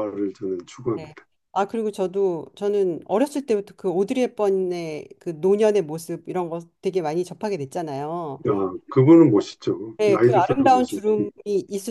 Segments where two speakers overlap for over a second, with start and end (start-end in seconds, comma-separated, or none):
10.0-11.3